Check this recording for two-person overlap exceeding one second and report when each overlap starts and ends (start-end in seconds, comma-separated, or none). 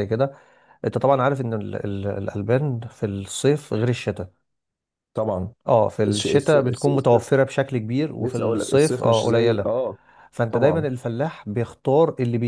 6.0-7.3, 8.2-9.7